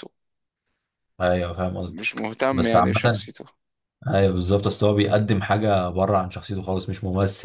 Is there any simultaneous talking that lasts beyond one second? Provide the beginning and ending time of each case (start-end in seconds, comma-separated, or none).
1.9-3.3